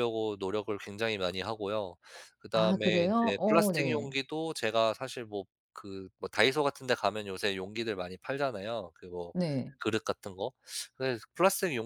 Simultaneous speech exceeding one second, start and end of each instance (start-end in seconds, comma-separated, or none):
2.5-4.2